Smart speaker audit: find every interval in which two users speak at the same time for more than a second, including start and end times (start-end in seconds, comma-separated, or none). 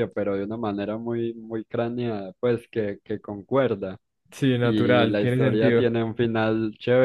4.6-5.9